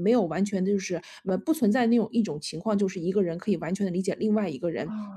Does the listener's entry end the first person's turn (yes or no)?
no